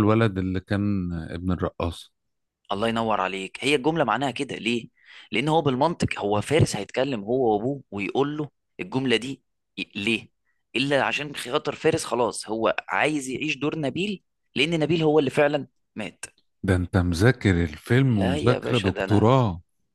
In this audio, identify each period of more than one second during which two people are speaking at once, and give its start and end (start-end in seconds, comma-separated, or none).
18.0-19.3